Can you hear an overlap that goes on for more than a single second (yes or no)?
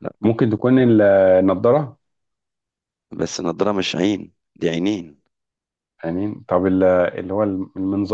no